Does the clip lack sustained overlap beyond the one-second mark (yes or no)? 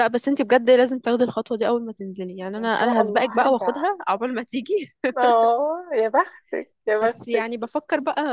no